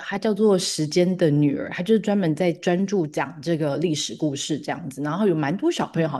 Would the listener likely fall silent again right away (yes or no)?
yes